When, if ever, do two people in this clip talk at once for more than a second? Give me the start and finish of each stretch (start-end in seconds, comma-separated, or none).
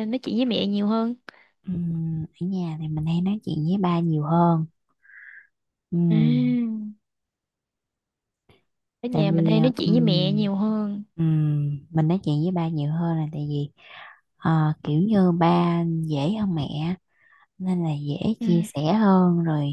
9.1-10.5